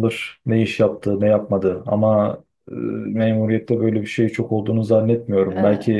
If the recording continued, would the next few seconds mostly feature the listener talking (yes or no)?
no